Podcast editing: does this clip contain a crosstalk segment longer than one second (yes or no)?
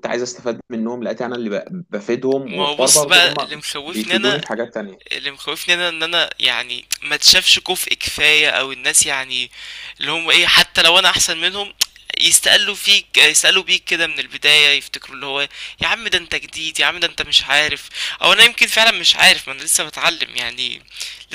yes